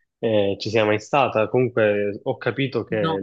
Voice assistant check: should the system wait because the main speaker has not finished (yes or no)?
yes